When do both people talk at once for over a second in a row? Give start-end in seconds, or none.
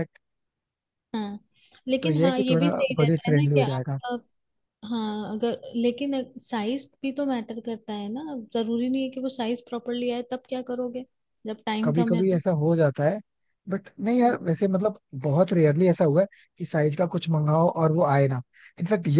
2.0-4.0